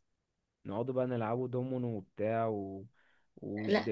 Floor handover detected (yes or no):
no